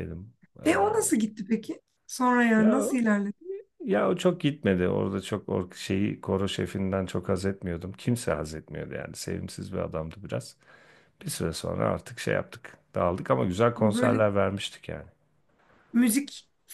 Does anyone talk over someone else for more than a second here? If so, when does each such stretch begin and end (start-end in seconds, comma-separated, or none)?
none